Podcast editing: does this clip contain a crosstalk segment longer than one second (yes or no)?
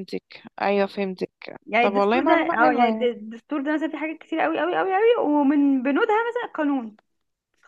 yes